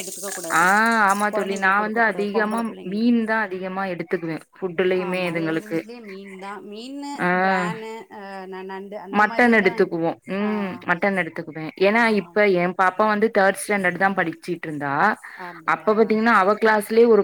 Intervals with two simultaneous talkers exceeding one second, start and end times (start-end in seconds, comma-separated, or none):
1.3-3.1